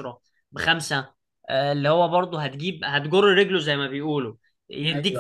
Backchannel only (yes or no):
yes